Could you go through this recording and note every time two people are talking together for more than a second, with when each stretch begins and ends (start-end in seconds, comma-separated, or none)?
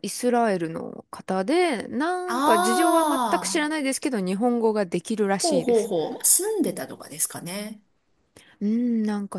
none